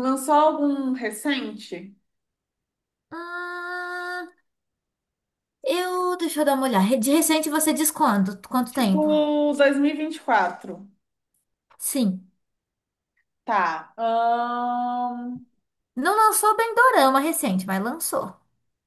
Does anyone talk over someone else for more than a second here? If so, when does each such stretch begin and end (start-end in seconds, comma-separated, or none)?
none